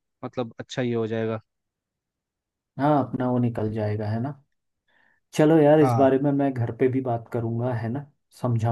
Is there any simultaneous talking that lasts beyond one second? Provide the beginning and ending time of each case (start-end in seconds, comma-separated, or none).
none